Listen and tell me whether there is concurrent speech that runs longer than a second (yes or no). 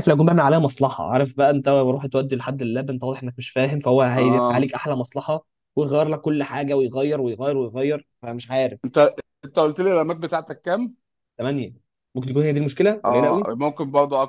no